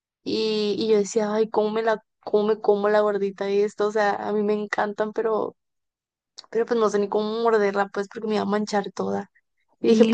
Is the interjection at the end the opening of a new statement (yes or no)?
yes